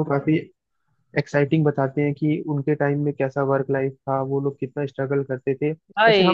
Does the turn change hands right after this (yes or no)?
no